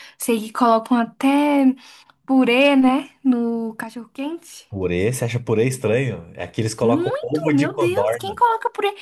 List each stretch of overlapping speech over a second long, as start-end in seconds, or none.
6.8-8.4